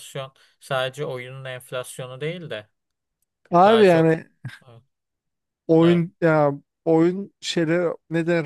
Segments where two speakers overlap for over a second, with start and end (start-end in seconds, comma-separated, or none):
none